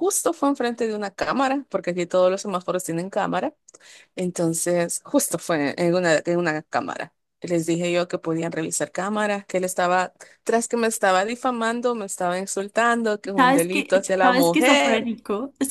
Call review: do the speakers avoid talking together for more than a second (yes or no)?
no